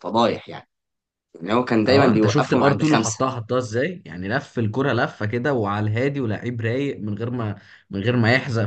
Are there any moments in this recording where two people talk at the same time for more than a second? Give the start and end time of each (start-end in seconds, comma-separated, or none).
1.9-3.2